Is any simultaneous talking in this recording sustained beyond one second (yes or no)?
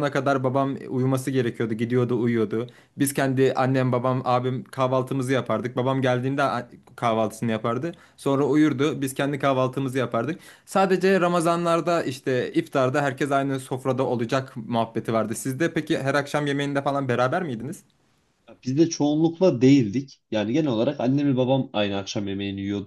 no